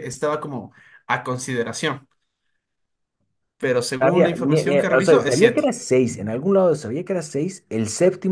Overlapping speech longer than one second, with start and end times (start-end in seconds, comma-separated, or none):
4.0-5.7